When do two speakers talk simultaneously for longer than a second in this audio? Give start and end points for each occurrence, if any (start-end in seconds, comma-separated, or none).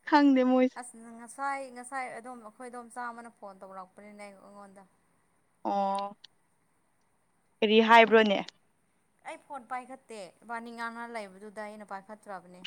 none